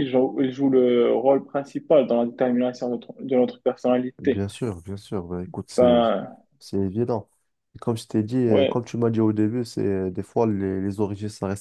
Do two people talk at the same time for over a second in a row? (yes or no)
no